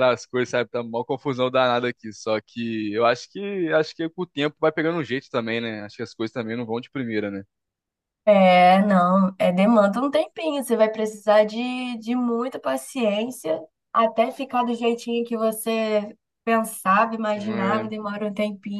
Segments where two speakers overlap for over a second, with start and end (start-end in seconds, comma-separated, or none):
none